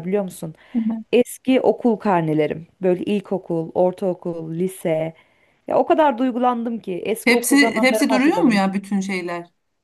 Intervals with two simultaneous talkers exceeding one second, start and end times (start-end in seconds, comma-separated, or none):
7.2-8.6